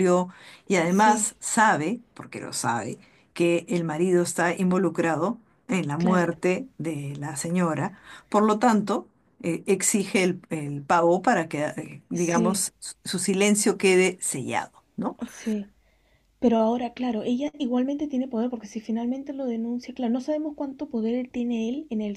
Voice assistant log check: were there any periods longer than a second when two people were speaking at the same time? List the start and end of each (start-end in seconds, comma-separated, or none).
none